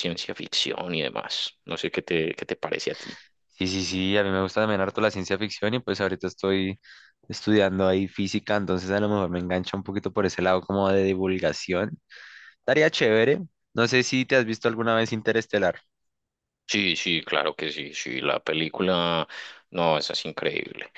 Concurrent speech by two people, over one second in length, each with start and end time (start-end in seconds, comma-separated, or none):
none